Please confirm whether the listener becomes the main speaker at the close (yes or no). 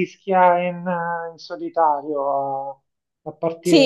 yes